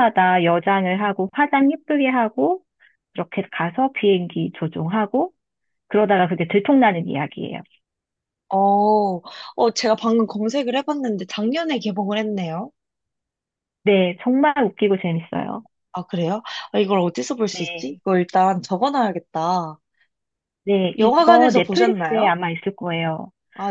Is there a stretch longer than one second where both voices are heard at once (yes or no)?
yes